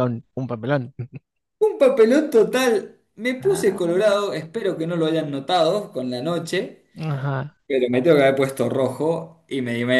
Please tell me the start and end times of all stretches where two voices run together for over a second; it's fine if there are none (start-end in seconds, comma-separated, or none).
none